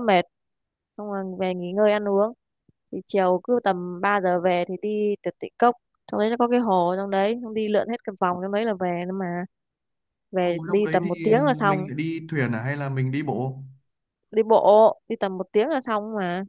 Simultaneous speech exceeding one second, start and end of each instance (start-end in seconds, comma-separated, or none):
10.4-11.9